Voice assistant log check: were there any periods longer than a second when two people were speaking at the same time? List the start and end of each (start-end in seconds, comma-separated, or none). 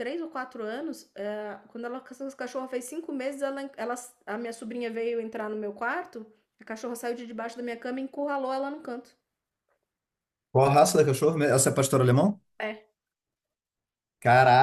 none